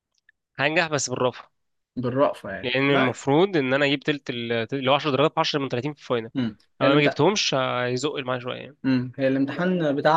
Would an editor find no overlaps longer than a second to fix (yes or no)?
yes